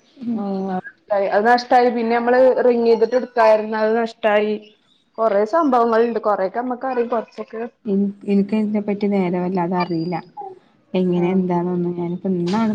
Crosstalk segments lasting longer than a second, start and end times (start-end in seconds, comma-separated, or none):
none